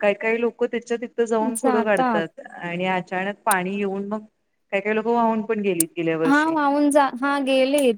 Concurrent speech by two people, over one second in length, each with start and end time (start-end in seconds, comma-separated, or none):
none